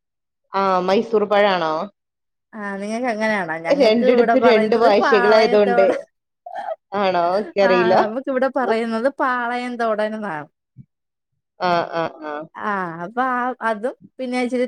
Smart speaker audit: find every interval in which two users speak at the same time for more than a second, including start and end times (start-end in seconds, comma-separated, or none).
3.8-5.8